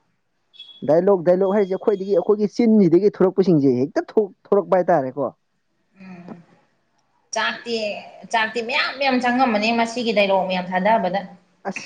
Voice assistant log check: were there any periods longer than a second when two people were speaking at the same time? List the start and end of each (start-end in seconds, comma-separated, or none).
none